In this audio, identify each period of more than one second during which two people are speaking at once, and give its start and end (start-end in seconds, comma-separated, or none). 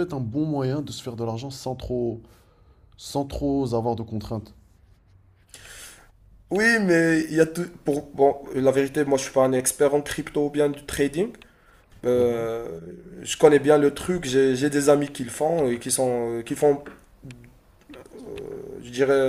none